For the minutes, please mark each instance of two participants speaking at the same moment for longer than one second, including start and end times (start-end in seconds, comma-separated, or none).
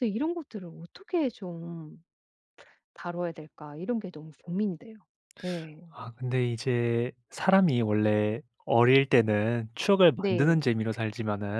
none